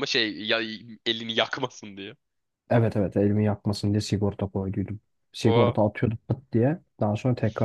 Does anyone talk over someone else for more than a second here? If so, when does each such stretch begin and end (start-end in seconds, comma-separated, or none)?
none